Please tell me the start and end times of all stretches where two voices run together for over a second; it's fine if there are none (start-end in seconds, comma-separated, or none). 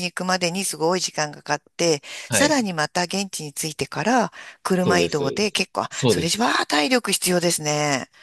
4.8-6.5